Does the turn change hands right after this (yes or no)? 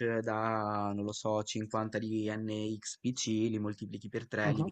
no